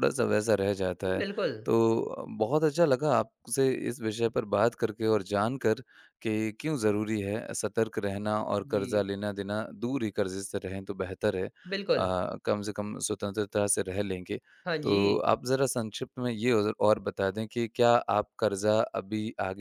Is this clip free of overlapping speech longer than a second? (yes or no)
yes